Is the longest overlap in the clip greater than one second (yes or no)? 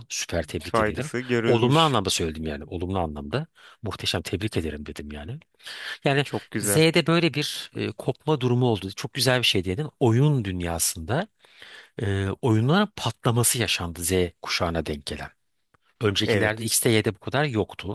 yes